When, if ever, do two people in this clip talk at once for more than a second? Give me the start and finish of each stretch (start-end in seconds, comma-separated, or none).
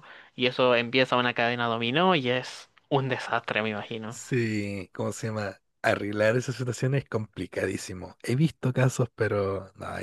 none